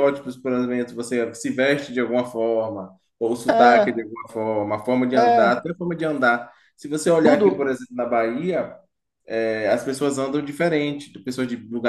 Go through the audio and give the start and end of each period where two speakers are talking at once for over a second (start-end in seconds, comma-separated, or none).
none